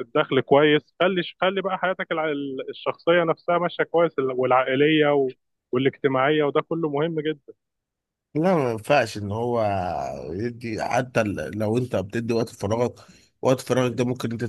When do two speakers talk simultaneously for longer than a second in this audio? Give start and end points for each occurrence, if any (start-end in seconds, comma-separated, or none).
none